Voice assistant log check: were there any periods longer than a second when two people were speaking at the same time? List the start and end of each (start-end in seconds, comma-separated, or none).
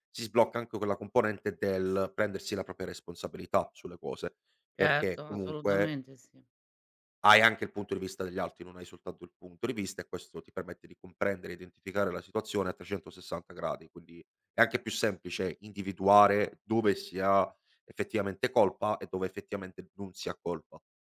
4.8-6.0